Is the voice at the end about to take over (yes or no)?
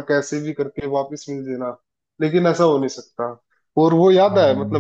no